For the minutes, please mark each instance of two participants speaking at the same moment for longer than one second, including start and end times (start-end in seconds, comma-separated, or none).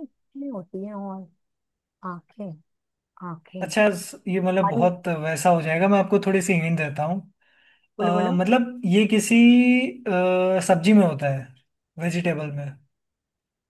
none